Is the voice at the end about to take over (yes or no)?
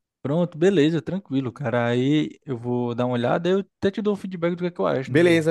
yes